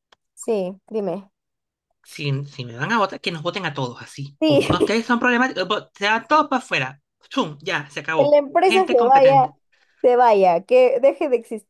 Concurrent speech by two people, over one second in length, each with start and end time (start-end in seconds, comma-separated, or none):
8.2-9.5